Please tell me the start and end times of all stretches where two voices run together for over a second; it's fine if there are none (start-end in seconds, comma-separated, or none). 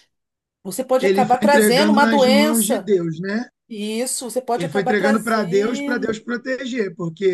1.0-2.9, 4.5-6.2